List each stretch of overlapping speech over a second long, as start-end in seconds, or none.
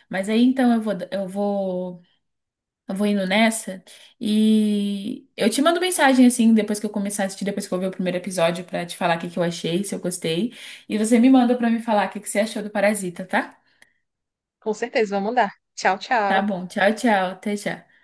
none